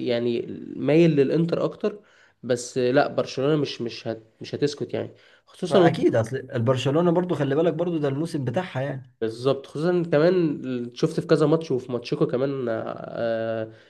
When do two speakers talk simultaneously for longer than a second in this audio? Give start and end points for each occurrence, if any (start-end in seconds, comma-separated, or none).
none